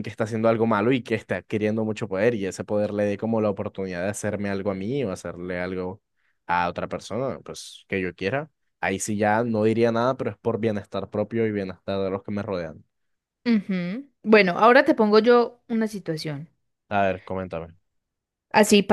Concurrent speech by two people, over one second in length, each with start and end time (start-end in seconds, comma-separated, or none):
none